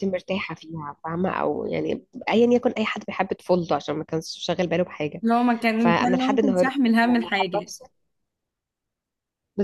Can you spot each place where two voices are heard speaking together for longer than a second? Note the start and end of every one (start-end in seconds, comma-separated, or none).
5.8-7.7